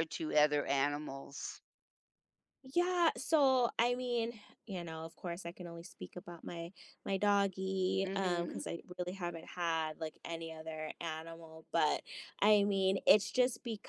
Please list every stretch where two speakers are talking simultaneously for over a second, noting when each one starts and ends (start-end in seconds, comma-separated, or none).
none